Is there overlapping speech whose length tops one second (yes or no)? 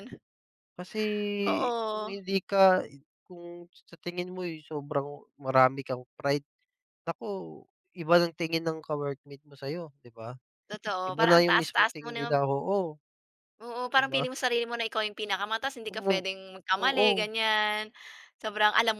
yes